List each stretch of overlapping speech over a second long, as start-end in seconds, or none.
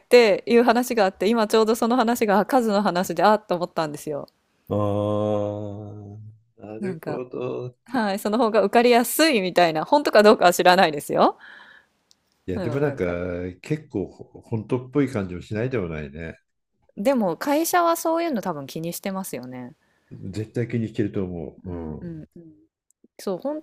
none